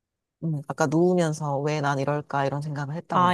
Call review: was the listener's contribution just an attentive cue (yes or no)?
no